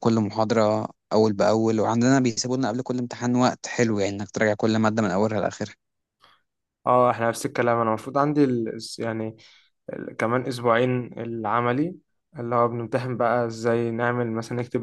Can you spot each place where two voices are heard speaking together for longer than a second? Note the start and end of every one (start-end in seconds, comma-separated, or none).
none